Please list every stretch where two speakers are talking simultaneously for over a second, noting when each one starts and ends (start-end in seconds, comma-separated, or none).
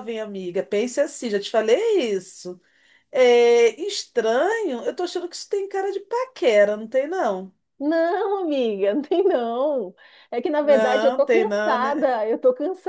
10.6-12.1